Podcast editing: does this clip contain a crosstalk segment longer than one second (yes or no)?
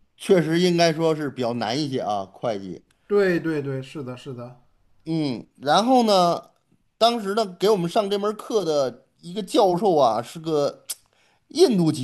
no